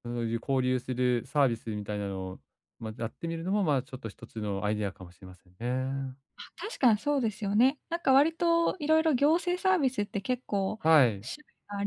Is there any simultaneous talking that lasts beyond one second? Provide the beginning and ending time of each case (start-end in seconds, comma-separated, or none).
none